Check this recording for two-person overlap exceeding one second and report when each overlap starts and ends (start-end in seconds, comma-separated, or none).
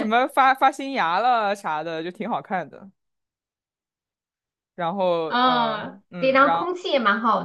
5.3-6.7